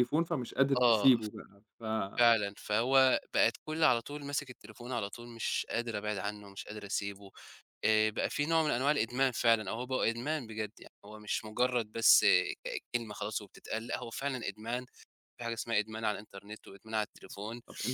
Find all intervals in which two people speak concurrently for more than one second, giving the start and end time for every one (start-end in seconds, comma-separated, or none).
none